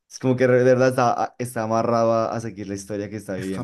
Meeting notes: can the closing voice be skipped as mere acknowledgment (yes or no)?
no